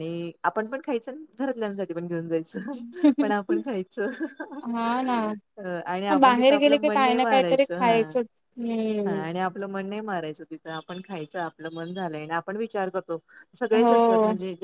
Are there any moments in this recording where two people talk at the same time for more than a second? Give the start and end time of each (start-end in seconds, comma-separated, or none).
6.1-8.0